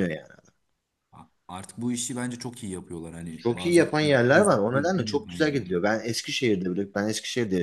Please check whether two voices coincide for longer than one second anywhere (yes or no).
yes